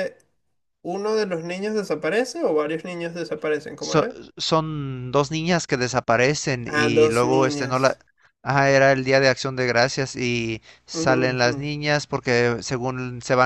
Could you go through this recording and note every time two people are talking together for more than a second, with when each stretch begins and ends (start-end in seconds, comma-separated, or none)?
6.7-8.0